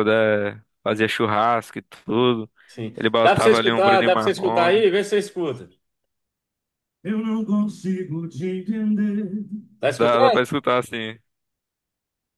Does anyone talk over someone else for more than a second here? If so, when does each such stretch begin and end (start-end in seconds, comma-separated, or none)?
3.0-4.9